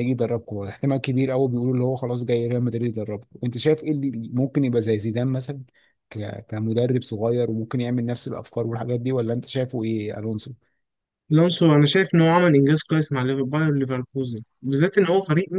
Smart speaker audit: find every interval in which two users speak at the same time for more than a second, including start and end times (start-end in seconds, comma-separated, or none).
none